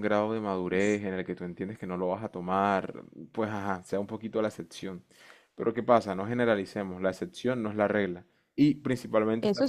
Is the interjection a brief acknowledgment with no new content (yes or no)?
yes